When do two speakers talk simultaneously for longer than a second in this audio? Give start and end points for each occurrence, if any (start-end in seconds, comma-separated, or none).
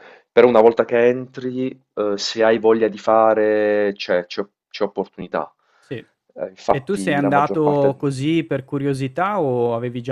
6.7-8.1